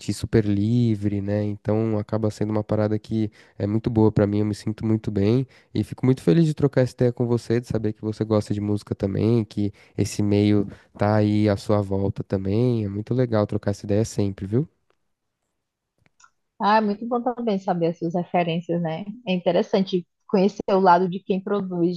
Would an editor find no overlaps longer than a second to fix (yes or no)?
yes